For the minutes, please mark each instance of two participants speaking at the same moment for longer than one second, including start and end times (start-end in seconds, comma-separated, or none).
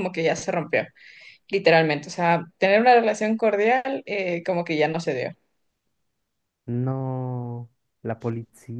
none